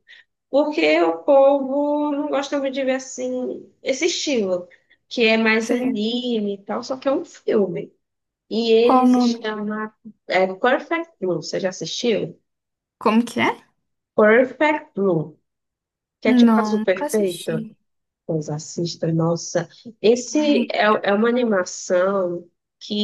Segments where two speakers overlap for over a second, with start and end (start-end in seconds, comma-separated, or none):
16.2-17.7